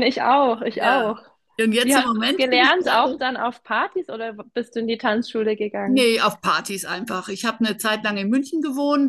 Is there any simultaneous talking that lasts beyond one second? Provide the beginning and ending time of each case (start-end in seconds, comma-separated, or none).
1.8-3.2